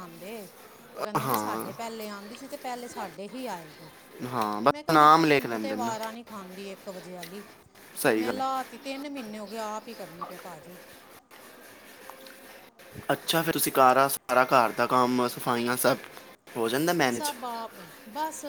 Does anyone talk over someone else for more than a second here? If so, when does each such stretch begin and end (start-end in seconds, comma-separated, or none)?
4.7-5.9